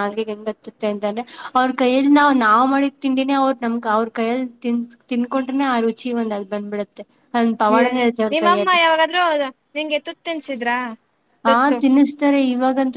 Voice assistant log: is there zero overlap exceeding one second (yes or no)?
yes